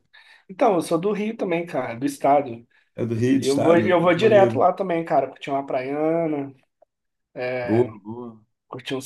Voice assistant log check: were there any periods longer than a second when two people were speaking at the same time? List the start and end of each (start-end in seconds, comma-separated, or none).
3.4-4.6